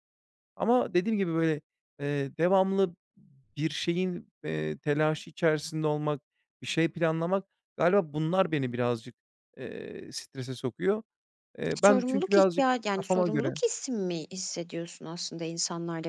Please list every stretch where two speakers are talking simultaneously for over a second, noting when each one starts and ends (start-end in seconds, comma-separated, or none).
11.8-13.5